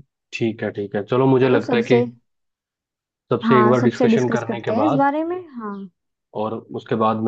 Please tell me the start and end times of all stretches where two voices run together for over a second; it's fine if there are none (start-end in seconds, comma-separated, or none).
3.4-5.1